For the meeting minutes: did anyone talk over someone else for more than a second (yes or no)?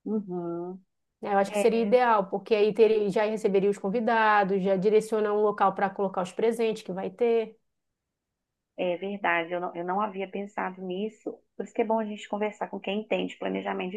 no